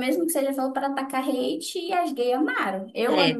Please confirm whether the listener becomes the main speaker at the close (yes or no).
no